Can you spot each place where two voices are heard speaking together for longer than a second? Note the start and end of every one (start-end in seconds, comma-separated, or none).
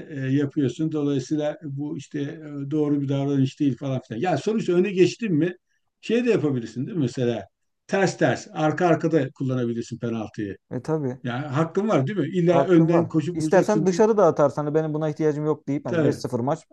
12.4-14.0